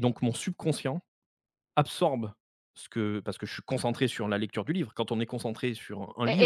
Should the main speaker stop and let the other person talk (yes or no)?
yes